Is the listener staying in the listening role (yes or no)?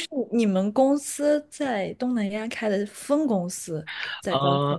no